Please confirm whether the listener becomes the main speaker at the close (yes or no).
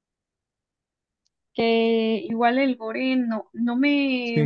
no